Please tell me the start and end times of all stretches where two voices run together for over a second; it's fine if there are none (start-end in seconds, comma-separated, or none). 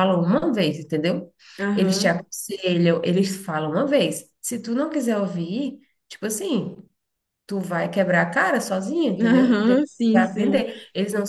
9.2-10.6